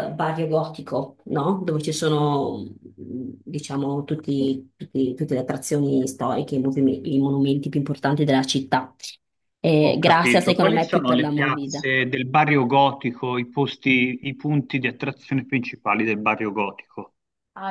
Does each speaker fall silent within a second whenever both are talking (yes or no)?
no